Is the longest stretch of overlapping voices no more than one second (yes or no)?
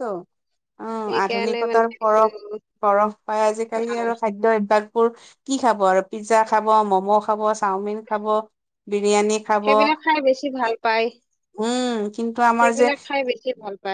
no